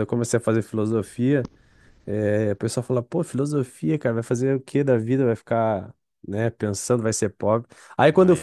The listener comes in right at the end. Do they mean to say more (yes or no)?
no